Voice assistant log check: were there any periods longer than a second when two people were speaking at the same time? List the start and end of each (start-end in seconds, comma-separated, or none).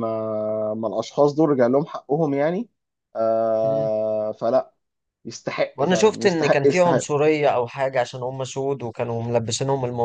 5.8-7.1